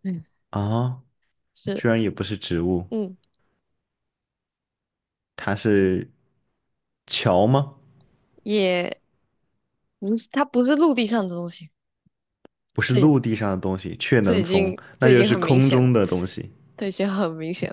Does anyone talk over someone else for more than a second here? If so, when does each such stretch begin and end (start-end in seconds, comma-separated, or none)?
14.2-15.9